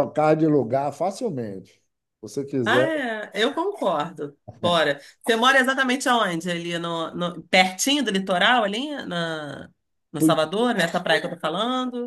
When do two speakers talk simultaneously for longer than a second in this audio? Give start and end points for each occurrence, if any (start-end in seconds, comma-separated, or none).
none